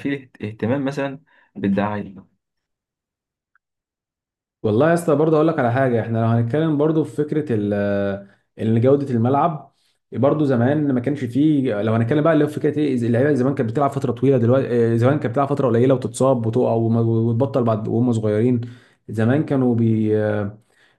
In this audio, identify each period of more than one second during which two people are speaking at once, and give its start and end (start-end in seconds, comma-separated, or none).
none